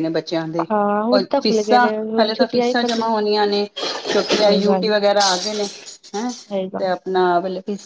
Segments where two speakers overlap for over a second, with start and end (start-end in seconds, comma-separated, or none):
1.1-3.1